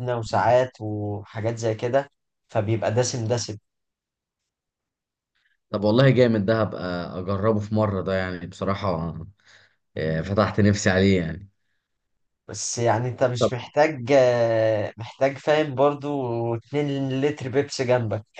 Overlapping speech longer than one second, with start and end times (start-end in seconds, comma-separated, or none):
none